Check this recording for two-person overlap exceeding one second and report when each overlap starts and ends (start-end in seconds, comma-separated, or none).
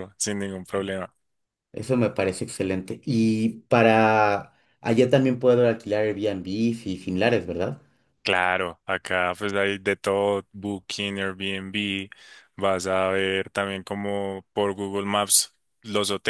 none